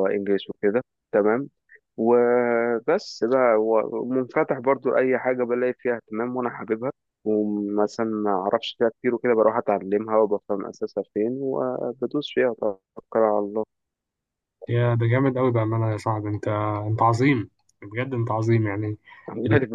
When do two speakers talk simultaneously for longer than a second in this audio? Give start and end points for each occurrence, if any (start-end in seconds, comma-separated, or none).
none